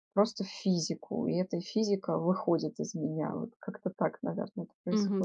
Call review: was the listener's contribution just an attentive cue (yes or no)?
no